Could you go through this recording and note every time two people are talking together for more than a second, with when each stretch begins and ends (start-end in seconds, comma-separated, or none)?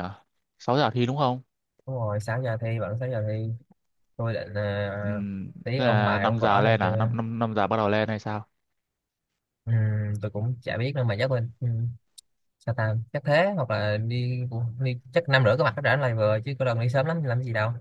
5.8-7.1